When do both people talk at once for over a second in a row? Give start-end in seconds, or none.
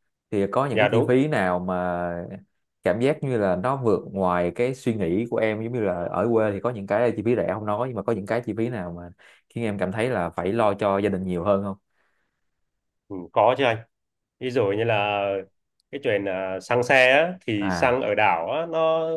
none